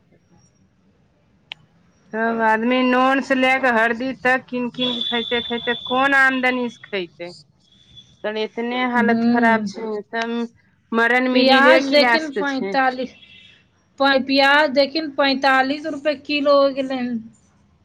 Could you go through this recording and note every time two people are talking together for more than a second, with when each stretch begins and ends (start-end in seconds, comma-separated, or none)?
11.3-12.8